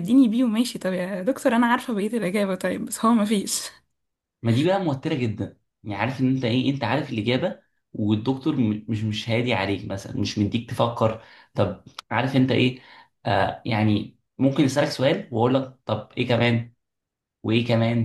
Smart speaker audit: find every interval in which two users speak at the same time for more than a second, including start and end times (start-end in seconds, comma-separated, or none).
none